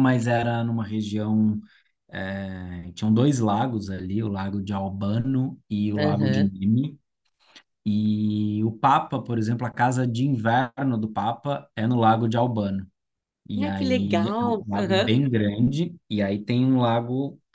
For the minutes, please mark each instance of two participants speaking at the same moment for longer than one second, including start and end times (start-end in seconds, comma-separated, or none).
13.6-15.1